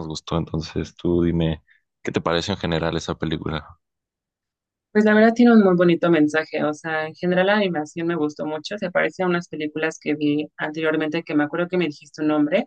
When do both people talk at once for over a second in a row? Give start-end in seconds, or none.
none